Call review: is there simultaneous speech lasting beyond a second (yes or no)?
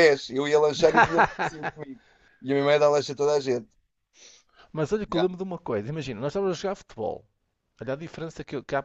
no